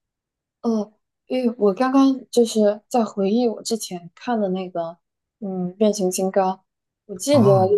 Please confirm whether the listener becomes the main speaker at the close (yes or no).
no